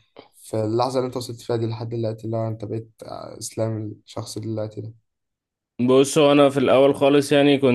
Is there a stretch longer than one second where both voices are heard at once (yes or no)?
no